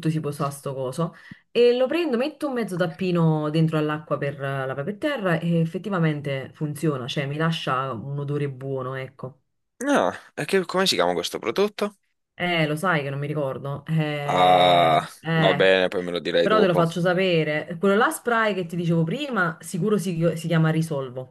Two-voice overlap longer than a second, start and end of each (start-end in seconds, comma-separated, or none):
14.2-15.7